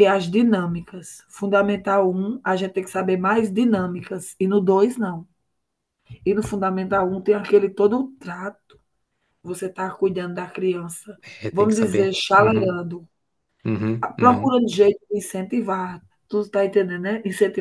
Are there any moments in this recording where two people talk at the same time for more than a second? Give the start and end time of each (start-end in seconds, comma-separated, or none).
11.4-12.8